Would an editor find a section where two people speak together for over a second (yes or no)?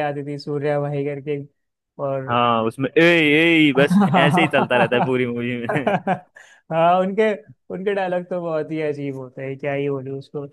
yes